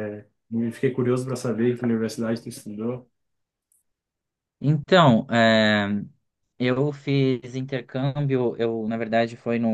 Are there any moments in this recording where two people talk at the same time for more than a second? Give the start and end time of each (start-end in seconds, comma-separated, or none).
none